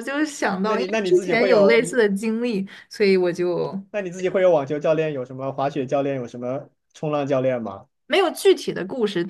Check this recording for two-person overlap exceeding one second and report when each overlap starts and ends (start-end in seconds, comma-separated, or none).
0.6-2.0